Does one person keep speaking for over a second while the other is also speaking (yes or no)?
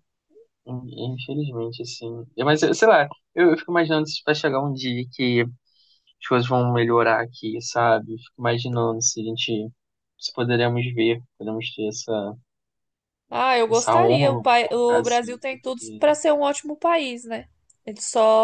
yes